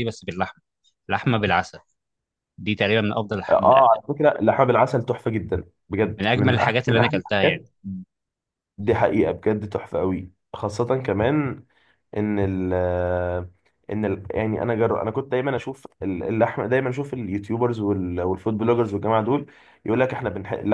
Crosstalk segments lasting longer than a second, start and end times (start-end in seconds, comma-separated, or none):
6.2-7.6